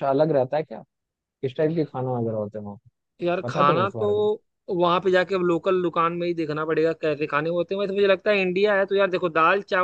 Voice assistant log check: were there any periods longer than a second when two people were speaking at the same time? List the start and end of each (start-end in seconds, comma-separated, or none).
none